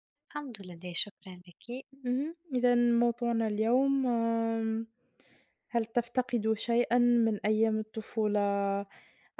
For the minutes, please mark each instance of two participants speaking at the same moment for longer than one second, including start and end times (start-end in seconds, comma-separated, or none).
none